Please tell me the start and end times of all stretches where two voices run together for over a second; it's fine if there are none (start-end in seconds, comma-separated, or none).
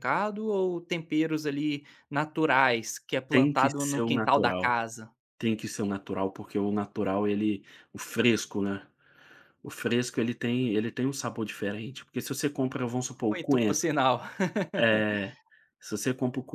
3.3-4.7